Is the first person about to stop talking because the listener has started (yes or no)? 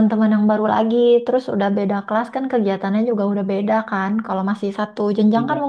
no